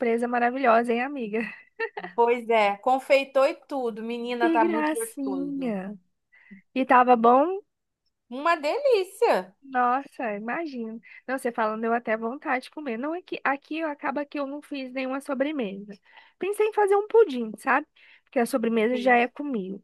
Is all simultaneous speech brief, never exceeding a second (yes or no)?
no